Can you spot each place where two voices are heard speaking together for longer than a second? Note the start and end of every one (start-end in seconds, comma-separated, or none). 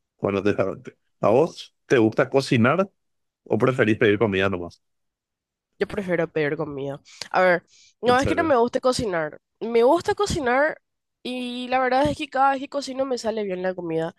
none